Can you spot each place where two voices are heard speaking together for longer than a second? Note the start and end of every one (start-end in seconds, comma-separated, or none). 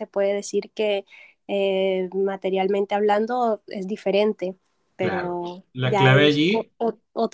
5.0-6.7